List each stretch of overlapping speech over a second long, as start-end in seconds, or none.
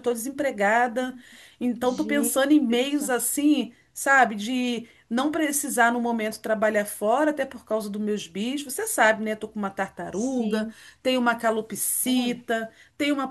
1.8-3.1